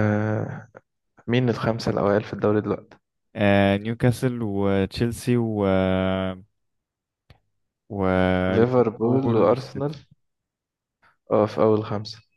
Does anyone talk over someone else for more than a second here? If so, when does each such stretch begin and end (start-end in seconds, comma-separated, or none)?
8.5-9.9